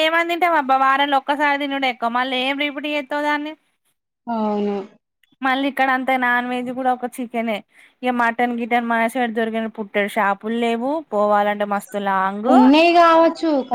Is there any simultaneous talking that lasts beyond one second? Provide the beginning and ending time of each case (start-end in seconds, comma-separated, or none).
none